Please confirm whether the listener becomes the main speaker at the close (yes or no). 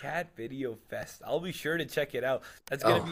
no